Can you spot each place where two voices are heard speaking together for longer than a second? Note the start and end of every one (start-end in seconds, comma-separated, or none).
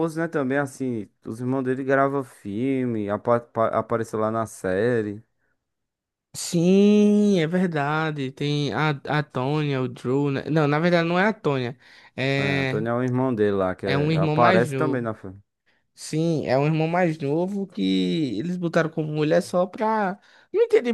13.8-15.1